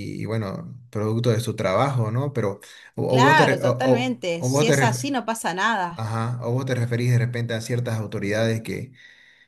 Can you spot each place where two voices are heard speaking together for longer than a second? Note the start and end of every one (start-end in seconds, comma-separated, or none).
3.1-5.1